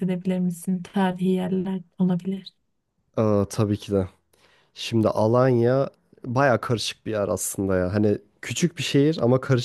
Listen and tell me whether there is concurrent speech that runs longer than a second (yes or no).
no